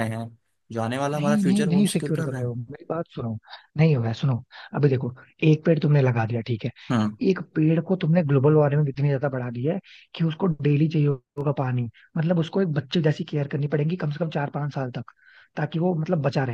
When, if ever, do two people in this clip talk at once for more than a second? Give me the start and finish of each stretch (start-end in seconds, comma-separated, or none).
1.1-2.6